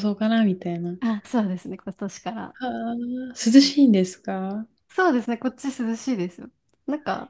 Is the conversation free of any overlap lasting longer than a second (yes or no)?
yes